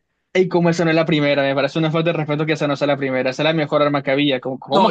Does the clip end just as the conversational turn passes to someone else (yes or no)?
yes